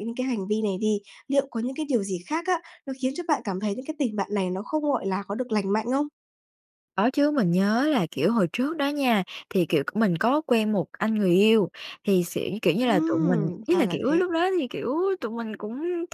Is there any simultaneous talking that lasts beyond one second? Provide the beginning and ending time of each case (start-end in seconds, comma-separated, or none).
12.8-14.3